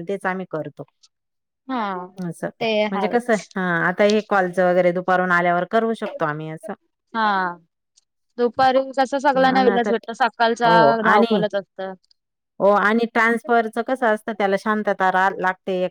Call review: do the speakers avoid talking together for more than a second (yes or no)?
yes